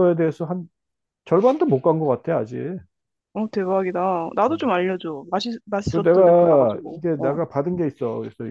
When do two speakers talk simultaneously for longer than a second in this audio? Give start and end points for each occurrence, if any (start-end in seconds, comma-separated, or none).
5.9-7.4